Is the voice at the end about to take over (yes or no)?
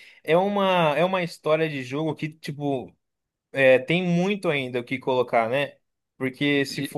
no